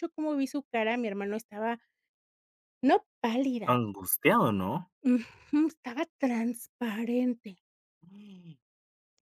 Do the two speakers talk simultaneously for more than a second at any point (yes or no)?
no